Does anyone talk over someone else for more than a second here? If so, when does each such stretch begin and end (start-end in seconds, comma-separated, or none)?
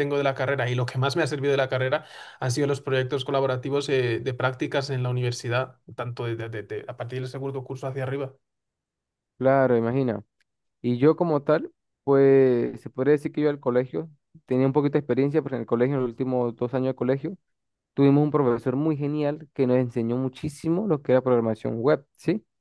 none